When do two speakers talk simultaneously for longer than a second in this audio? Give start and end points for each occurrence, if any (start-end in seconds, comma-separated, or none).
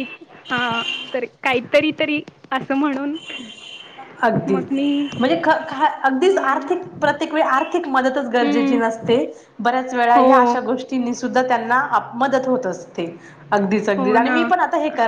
none